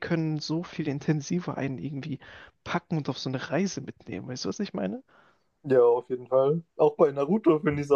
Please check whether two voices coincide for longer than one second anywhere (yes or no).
no